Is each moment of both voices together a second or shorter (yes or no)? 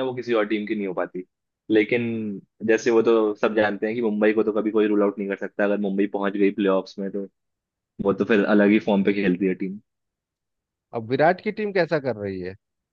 yes